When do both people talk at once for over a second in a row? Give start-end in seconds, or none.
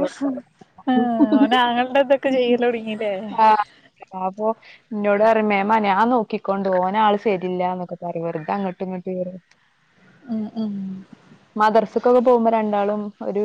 none